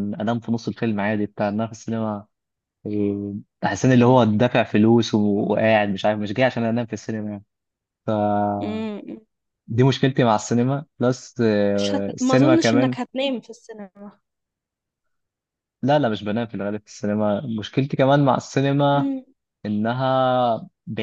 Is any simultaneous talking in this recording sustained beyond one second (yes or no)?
yes